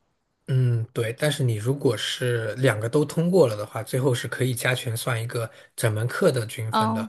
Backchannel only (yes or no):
yes